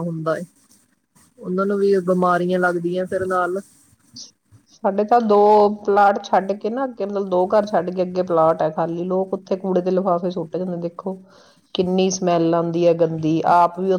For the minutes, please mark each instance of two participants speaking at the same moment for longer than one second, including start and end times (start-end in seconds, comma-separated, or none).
none